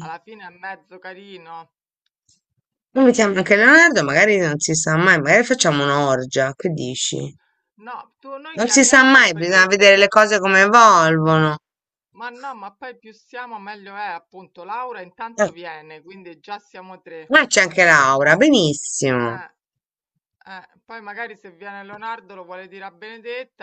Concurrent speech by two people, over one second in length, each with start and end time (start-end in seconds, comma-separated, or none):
8.6-10.1